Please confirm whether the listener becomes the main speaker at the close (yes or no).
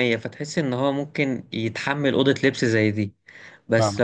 no